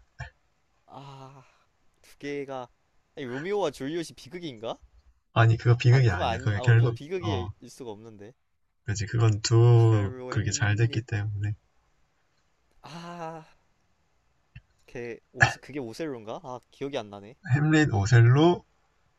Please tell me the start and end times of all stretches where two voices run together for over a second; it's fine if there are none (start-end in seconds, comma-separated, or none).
5.9-7.5, 9.7-11.1